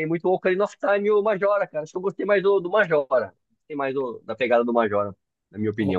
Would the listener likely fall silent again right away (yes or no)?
no